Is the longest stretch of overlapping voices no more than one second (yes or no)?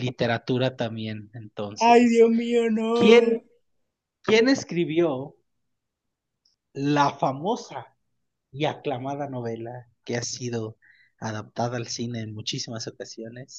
yes